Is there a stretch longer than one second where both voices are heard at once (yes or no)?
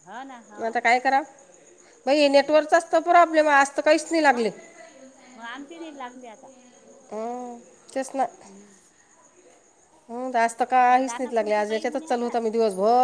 yes